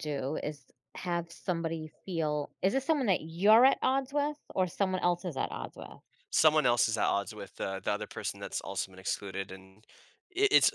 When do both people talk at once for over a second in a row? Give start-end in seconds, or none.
none